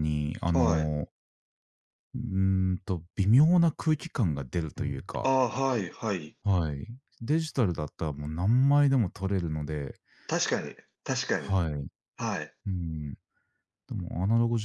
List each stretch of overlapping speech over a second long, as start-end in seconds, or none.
none